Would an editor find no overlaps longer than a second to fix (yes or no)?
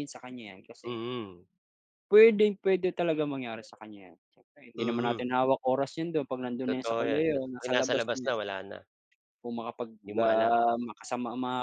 no